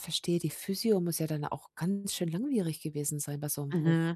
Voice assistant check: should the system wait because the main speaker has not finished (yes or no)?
no